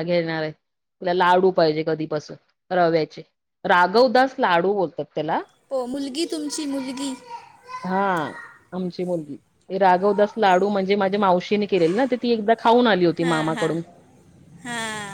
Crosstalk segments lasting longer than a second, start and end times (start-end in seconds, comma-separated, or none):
none